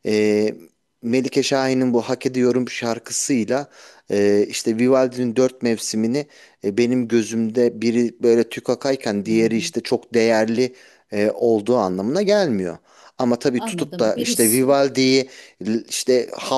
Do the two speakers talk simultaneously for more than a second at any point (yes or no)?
yes